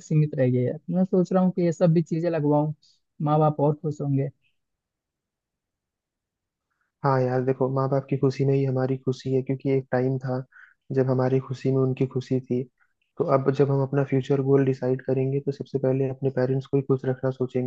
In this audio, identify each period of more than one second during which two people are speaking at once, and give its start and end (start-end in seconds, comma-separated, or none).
none